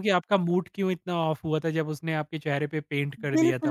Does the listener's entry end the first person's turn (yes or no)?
yes